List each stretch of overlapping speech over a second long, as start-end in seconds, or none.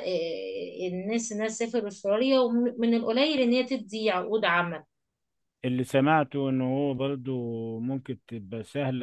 none